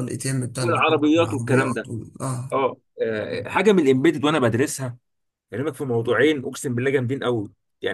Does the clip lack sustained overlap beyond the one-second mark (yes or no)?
no